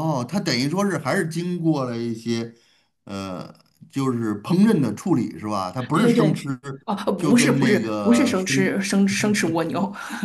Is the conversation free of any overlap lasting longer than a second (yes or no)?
no